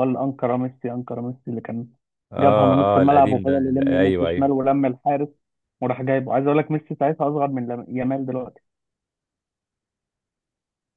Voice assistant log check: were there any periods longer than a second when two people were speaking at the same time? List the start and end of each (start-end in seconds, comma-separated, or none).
2.4-4.5